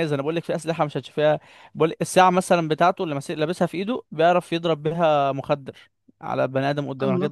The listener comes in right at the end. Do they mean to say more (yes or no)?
no